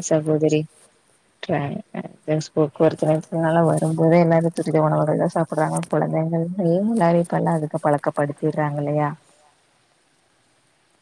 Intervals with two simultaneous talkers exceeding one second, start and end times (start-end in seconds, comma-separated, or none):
3.3-8.8